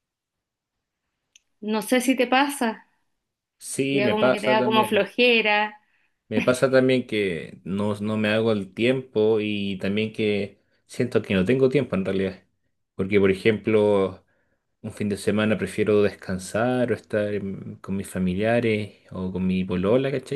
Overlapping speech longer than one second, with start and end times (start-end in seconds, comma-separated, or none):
3.9-5.1